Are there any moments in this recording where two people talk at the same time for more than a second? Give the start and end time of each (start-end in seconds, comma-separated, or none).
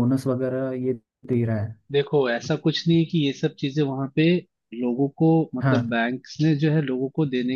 none